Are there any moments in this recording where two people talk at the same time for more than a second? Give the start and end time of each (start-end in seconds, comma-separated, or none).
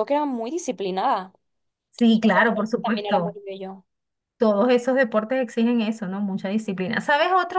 2.1-3.4